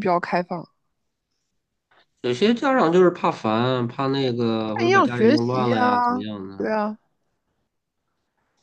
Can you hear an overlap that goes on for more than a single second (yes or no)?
yes